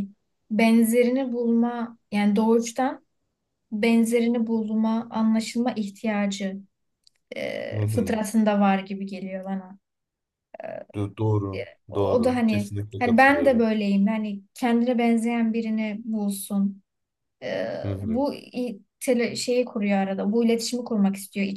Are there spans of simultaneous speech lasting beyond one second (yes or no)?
yes